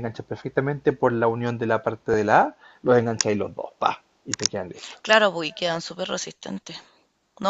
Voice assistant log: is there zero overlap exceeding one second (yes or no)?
yes